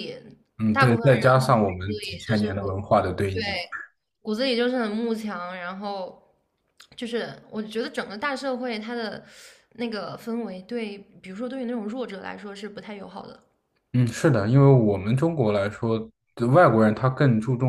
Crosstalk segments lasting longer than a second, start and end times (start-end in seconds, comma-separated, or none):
0.7-2.6